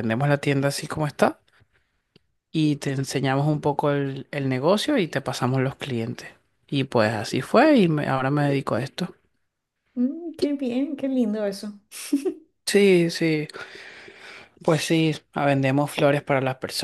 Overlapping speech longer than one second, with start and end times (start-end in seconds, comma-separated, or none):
none